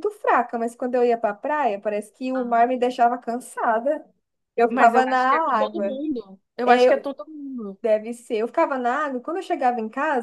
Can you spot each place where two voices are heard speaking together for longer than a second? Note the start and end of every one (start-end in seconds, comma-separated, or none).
4.7-6.0